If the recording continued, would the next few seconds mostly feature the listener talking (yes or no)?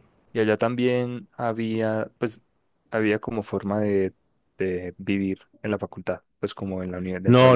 yes